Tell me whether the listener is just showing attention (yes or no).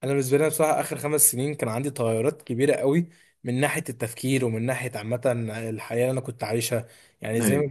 yes